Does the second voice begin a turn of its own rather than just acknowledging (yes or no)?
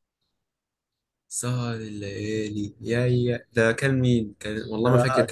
yes